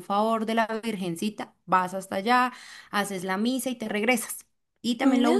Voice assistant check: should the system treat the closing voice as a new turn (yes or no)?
no